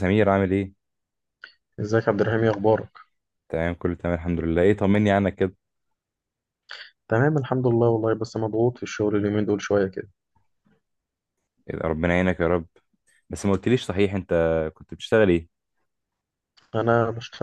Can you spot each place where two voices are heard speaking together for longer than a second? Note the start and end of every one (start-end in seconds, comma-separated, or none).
none